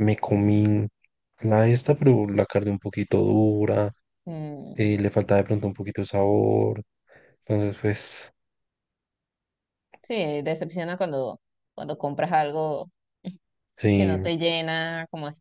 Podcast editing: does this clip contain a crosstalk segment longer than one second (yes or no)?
no